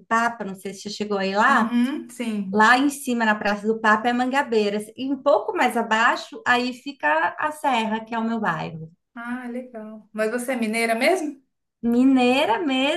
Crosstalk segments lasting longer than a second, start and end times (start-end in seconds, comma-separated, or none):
none